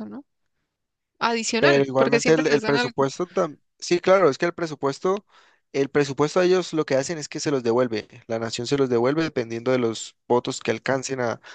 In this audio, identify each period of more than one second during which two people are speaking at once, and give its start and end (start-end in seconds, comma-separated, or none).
1.6-3.1